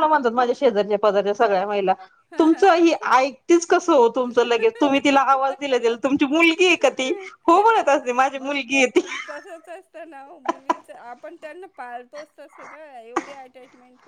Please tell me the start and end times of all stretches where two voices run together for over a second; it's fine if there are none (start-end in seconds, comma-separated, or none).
none